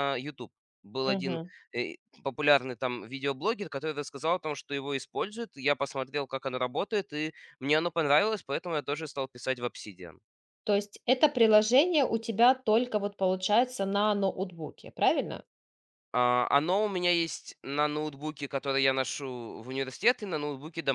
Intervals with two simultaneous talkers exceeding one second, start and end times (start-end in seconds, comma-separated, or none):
none